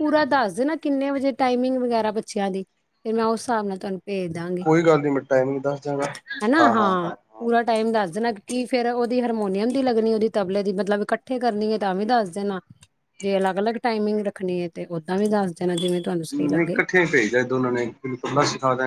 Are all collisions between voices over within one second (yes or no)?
yes